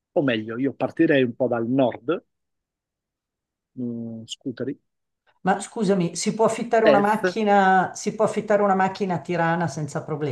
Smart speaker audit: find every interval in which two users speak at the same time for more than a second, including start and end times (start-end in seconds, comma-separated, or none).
none